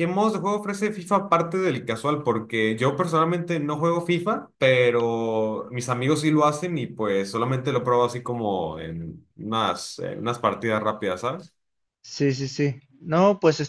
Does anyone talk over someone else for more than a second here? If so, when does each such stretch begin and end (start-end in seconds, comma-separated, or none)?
none